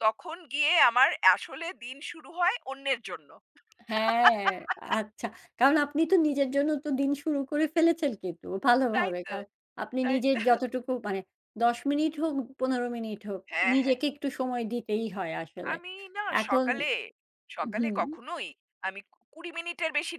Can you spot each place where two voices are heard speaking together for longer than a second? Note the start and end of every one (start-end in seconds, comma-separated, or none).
none